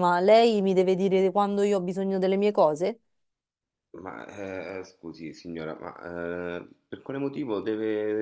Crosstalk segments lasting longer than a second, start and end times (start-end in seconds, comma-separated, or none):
none